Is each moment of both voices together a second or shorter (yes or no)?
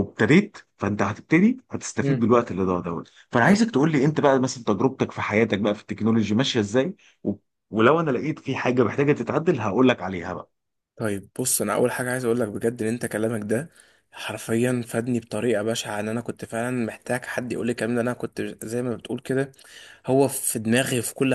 yes